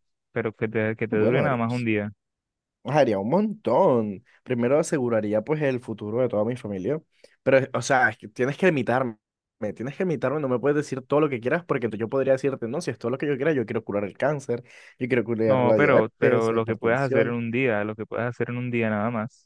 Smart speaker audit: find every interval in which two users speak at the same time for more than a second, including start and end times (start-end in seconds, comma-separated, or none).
15.5-17.4